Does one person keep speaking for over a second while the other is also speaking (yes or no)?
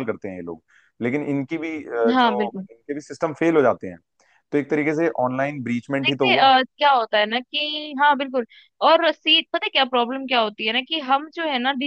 no